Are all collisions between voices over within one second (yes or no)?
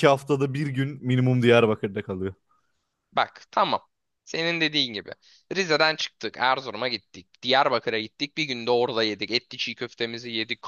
yes